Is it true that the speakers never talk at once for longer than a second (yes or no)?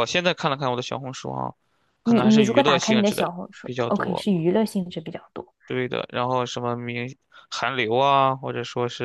no